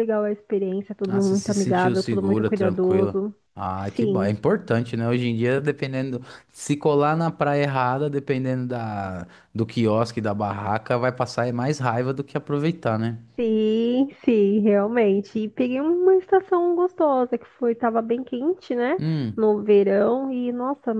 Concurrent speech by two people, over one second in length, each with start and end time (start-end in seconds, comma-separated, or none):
1.1-3.2